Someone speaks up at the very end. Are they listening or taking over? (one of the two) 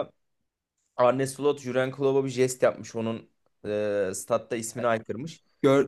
taking over